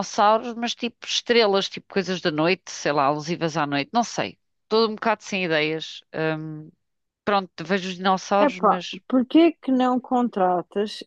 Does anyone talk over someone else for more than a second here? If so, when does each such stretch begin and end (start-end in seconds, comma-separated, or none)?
none